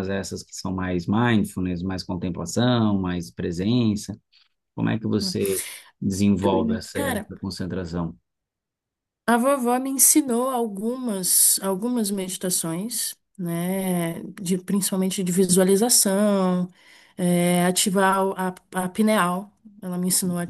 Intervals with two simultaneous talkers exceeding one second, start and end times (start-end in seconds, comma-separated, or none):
none